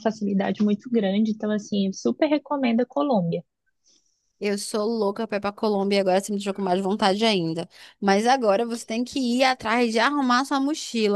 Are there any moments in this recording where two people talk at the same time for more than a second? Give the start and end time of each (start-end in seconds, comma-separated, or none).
none